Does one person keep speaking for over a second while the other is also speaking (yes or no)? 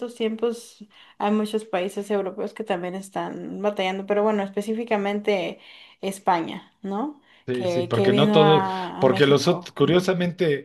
yes